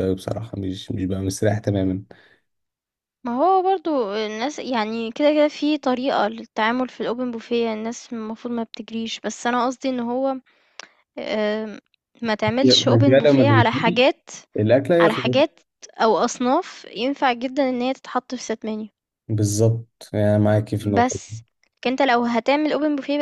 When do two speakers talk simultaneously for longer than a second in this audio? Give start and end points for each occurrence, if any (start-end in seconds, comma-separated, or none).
12.6-14.0